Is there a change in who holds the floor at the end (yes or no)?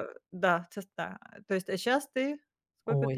yes